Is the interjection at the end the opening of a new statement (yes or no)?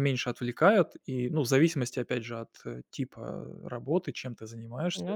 no